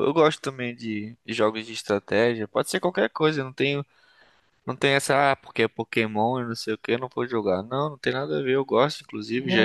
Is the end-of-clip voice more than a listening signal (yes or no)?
no